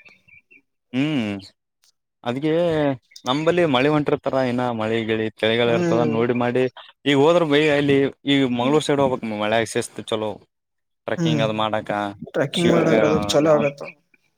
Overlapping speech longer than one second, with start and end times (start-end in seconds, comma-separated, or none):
none